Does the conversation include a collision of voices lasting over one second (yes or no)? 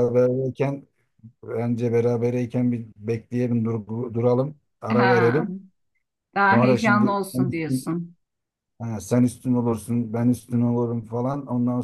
yes